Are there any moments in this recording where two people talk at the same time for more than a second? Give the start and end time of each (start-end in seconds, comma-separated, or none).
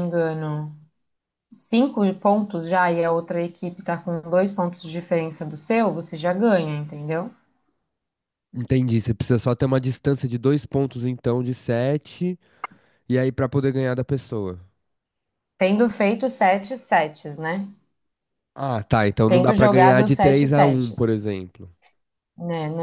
19.2-21.2